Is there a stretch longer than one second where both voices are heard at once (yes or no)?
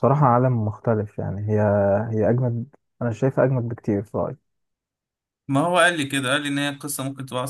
no